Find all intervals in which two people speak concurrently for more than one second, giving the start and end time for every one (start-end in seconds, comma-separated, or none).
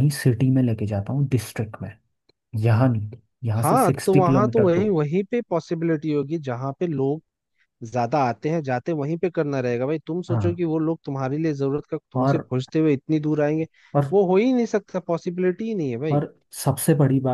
3.6-5.0